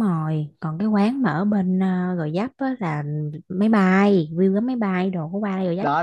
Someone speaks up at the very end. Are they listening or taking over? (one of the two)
taking over